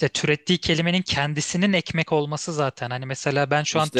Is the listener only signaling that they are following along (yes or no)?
yes